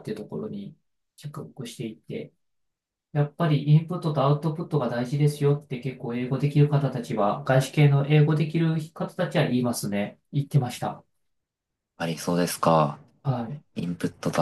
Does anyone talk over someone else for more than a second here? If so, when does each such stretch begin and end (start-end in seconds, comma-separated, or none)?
none